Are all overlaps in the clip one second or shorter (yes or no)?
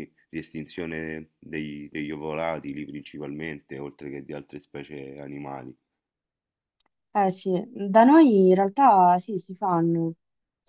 yes